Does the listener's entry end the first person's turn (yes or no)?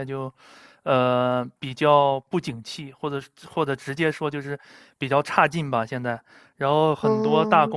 no